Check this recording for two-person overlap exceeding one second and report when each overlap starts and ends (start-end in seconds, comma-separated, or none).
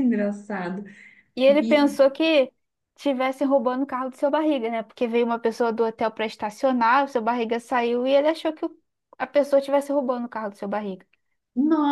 none